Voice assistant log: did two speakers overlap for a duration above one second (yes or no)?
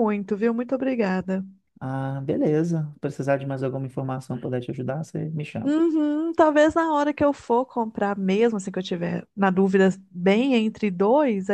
no